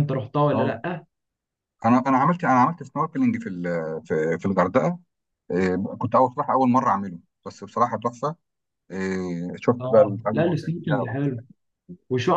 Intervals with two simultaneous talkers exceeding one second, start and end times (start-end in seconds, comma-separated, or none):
9.8-11.4